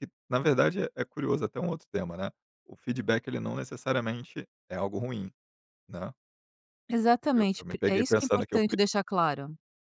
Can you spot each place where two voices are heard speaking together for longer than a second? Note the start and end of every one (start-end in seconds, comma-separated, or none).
7.3-8.8